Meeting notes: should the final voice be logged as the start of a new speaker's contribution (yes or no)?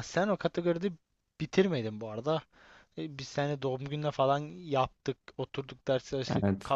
no